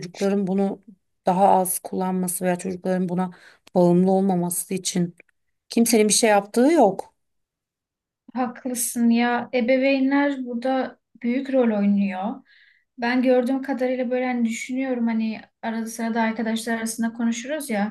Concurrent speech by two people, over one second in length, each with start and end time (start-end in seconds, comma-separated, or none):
none